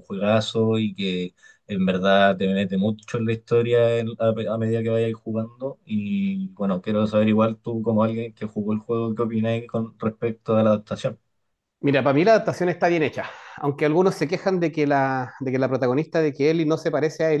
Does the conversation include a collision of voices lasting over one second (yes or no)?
no